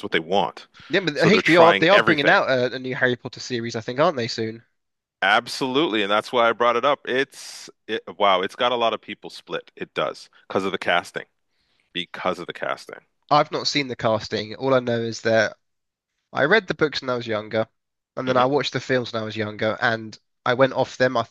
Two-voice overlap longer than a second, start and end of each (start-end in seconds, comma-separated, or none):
1.1-2.4